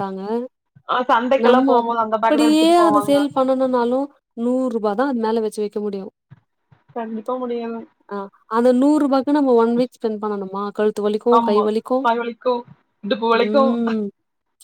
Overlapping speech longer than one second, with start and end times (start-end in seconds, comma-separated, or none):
1.4-3.2